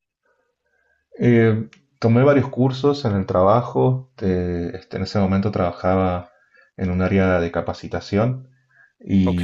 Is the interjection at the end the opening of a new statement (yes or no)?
no